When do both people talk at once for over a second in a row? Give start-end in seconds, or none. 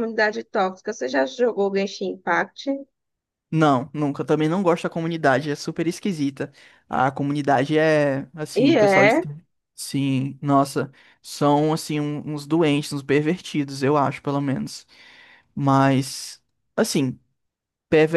none